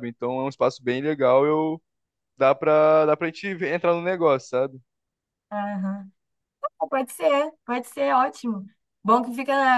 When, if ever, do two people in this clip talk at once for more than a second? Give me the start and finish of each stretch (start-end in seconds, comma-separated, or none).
none